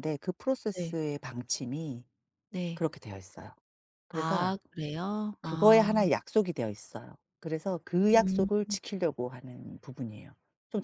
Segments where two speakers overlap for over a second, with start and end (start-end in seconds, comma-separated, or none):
none